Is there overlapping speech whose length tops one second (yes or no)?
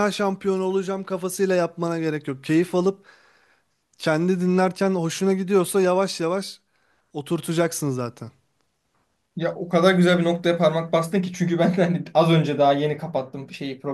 no